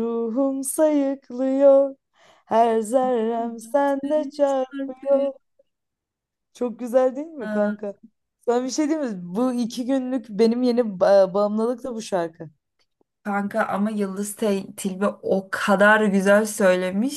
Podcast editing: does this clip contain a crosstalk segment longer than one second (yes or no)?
yes